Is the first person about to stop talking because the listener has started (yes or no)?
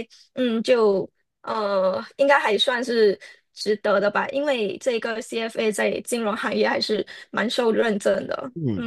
yes